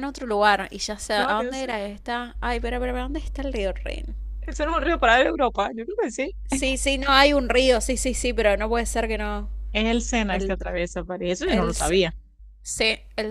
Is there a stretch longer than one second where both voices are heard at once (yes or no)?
no